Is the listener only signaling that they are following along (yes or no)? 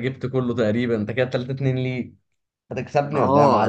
no